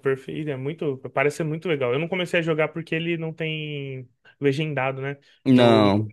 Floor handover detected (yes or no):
no